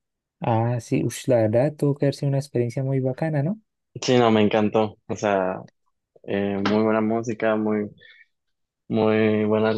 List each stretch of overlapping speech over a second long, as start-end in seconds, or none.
none